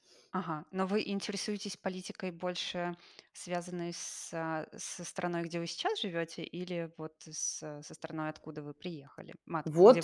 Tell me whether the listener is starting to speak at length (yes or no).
yes